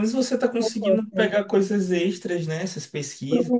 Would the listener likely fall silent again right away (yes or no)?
yes